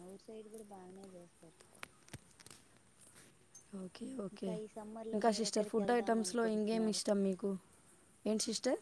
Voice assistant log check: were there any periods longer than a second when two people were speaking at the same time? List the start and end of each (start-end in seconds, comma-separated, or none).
5.1-7.0